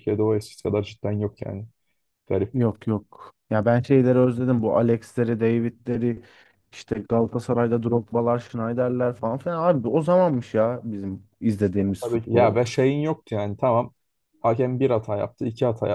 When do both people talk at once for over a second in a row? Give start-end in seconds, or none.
none